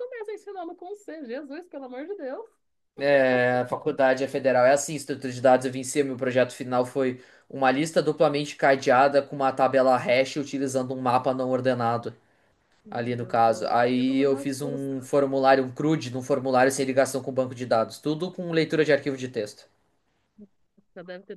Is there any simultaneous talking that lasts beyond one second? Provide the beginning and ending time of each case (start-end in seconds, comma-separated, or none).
12.9-15.1